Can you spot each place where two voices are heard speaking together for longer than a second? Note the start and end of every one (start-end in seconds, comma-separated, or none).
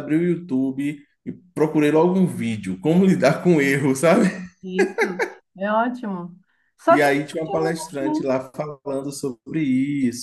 6.9-8.3